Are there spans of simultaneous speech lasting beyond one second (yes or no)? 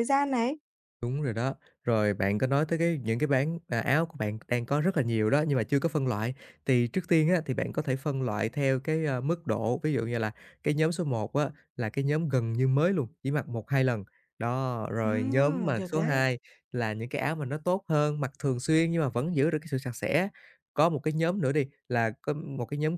yes